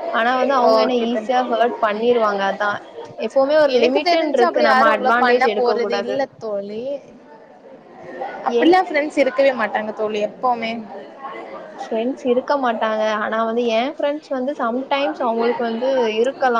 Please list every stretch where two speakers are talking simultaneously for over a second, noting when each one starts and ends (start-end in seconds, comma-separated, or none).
3.8-5.5